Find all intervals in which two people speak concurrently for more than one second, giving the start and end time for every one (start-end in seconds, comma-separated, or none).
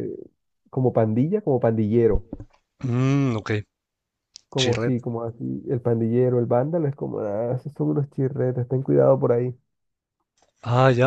none